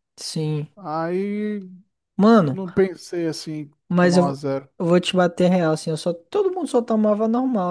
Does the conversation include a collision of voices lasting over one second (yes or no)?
no